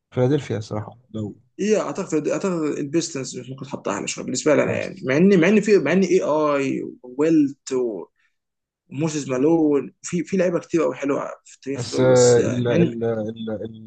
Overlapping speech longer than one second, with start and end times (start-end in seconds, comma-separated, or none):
11.8-12.9